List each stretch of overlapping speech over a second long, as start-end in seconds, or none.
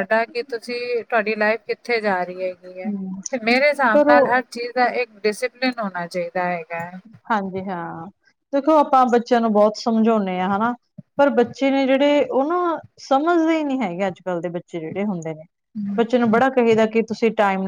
none